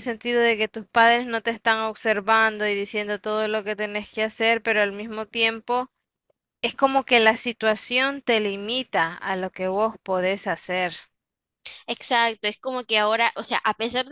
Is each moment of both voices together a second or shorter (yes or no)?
yes